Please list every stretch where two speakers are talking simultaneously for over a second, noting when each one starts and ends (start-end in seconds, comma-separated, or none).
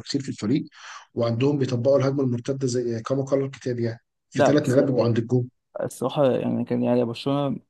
none